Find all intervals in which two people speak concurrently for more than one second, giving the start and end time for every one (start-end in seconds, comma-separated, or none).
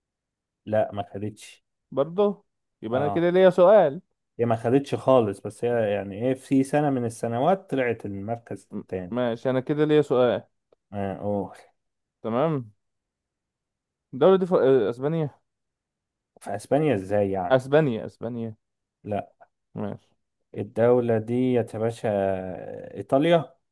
none